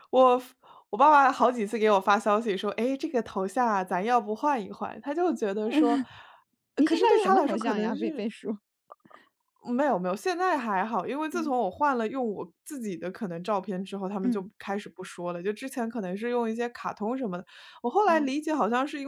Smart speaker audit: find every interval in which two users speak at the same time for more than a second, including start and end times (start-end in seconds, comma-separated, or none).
6.8-8.3